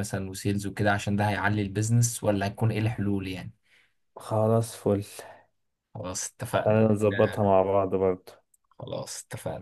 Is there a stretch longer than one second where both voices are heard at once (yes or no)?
no